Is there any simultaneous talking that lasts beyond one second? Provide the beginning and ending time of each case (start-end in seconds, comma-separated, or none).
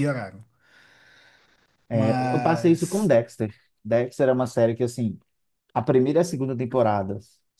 1.9-3.1